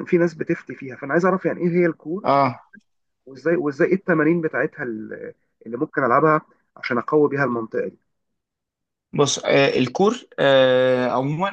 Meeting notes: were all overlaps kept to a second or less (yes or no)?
yes